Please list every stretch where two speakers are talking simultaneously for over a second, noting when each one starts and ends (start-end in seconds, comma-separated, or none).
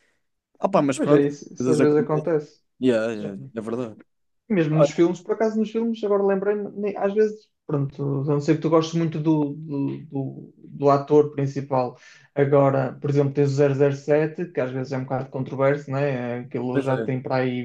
0.9-2.3